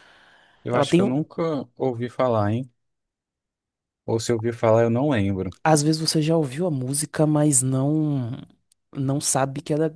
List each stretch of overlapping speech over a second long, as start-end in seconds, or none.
none